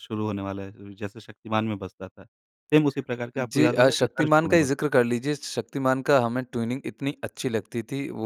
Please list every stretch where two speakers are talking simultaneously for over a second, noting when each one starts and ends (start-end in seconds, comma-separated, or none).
3.4-4.7